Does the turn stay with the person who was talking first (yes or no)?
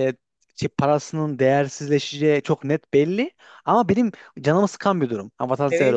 no